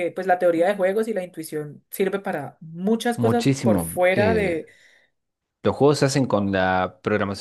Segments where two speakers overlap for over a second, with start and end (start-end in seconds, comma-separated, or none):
3.2-4.6